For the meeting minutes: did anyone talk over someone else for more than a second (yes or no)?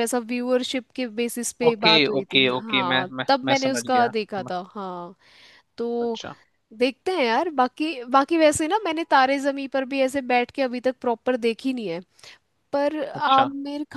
yes